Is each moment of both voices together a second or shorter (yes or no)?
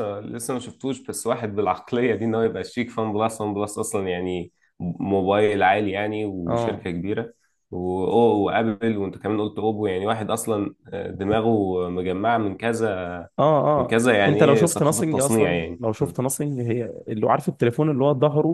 no